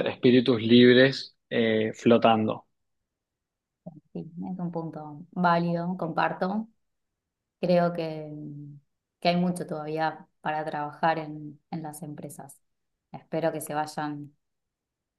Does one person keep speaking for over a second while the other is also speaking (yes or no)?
no